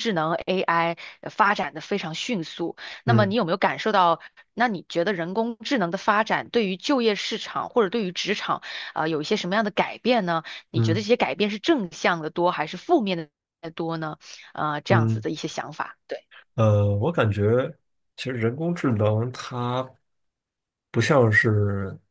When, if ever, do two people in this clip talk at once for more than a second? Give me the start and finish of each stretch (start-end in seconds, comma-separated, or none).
none